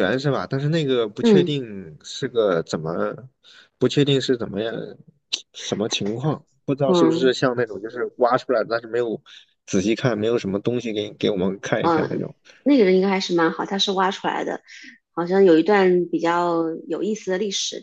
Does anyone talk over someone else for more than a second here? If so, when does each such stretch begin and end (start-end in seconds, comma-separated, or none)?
none